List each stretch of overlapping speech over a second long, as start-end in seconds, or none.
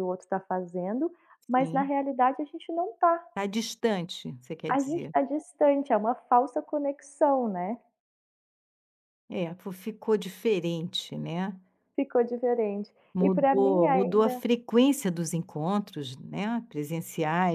13.1-14.4